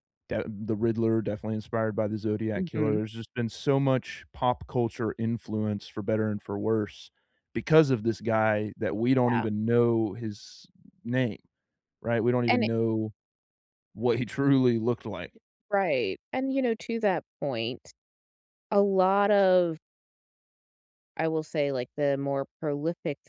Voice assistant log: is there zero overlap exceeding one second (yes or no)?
yes